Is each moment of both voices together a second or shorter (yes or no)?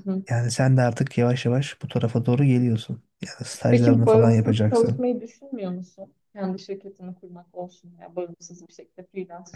no